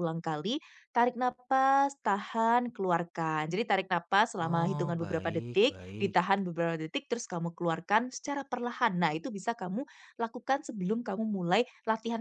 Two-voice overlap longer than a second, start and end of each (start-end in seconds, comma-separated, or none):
4.4-6.2